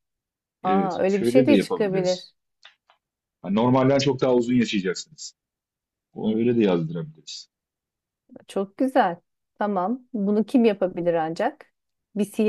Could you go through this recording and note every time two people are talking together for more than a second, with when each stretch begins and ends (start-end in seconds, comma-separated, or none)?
0.6-2.3